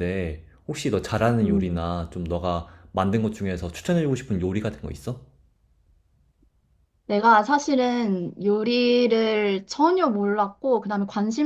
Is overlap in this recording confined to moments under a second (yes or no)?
yes